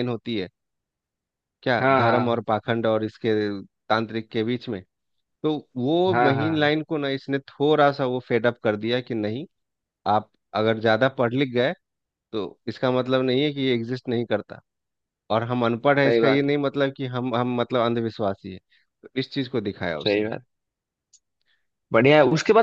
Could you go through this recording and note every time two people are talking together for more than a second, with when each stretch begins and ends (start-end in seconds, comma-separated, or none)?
none